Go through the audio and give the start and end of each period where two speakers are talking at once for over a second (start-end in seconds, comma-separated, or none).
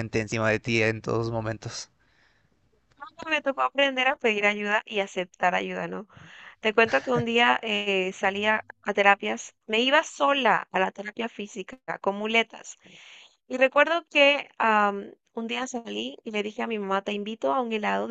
none